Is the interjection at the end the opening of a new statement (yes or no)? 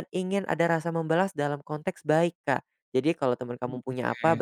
no